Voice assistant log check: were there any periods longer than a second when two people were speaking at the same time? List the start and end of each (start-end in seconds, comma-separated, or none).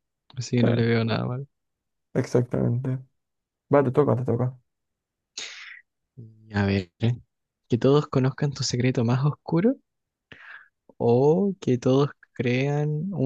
none